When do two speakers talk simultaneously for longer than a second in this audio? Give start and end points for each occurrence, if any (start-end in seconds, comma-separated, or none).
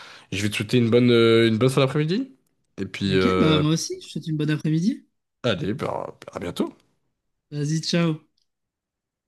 none